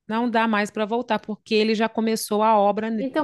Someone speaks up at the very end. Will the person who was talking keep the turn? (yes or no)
no